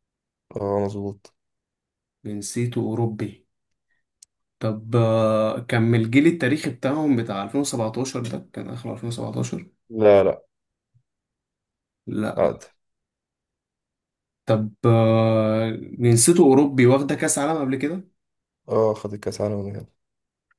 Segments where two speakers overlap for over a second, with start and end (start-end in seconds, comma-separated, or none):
none